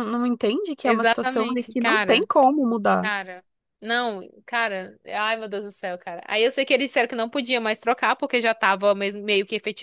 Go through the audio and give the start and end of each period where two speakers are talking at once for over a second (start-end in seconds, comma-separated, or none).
0.8-2.3